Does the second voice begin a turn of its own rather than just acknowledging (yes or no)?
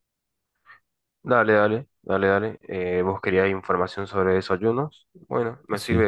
no